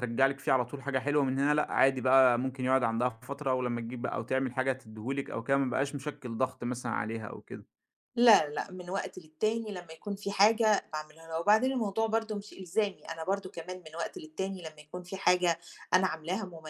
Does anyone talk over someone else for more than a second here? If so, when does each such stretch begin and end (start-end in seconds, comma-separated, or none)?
none